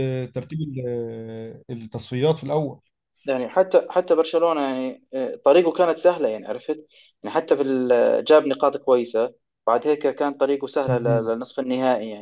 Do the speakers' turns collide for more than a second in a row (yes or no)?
no